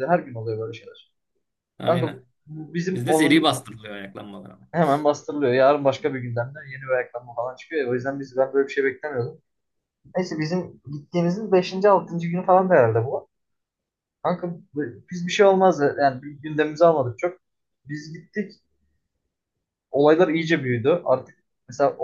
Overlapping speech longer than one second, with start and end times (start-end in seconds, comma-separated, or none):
none